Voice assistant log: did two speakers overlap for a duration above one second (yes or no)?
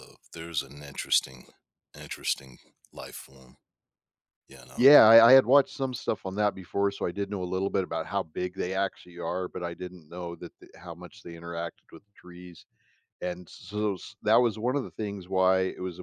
no